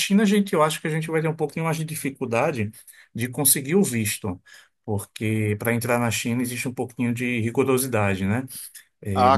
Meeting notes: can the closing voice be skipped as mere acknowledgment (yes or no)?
no